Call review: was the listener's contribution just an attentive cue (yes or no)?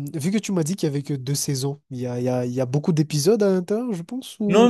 no